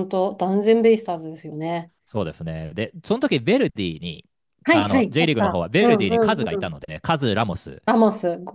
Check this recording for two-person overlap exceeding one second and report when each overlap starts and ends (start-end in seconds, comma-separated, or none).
4.7-6.8